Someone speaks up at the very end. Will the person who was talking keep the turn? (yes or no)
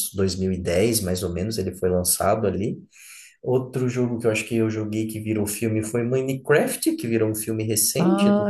no